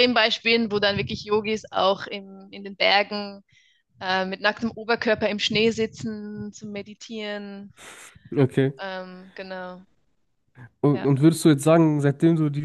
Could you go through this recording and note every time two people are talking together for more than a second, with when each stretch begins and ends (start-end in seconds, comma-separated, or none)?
none